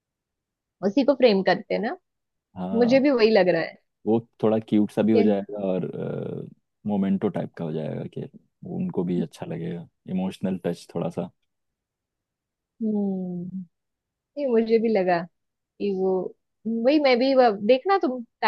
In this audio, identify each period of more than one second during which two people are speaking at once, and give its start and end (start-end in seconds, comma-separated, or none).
none